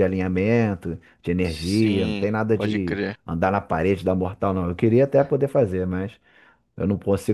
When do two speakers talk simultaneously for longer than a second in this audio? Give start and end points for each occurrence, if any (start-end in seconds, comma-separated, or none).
1.4-3.2